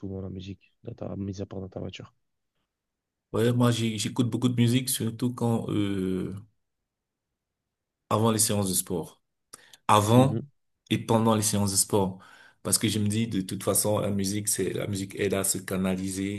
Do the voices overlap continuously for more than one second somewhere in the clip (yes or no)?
no